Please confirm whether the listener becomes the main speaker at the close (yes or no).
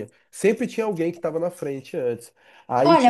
yes